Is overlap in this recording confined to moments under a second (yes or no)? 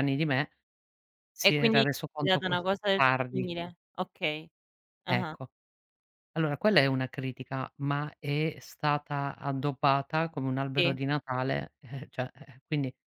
no